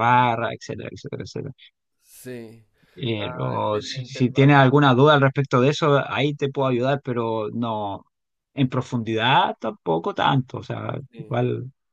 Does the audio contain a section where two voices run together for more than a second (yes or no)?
yes